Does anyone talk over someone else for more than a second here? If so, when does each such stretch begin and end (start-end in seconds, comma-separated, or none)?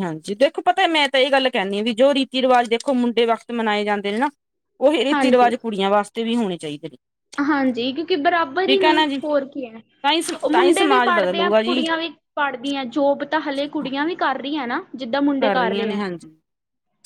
10.4-11.8